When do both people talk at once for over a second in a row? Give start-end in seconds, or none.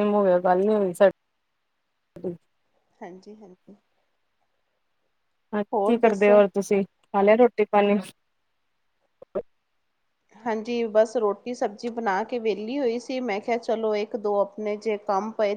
none